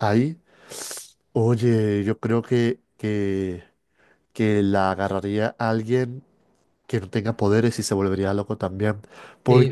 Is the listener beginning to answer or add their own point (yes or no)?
yes